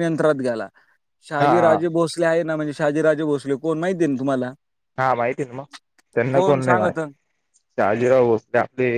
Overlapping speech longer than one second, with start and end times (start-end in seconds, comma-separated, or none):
none